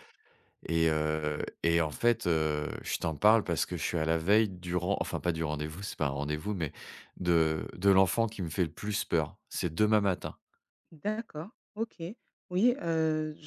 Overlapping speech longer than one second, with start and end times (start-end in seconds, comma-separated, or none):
none